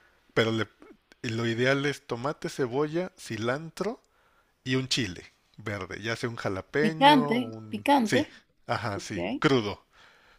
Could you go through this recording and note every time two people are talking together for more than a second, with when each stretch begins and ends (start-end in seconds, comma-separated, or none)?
6.8-8.2